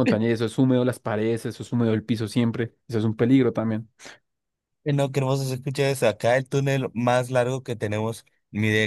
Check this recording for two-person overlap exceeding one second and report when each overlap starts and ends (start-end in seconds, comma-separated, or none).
none